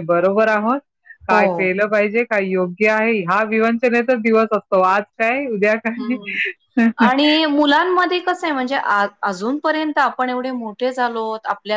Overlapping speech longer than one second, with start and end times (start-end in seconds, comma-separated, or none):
none